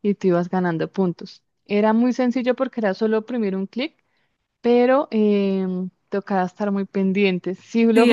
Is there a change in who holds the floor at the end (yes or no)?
yes